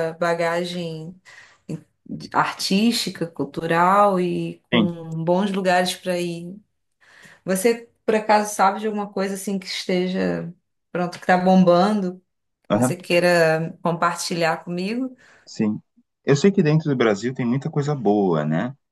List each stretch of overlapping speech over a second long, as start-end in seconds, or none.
none